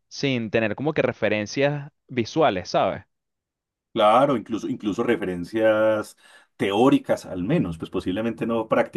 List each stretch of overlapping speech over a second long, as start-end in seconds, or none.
none